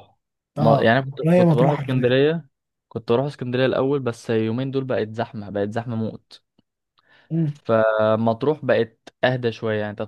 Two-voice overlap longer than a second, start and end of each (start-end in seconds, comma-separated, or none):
0.6-2.1